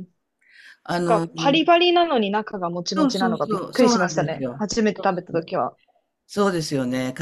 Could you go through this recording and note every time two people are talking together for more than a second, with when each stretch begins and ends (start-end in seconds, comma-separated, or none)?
2.9-5.5